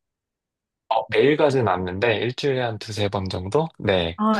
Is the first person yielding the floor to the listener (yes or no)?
yes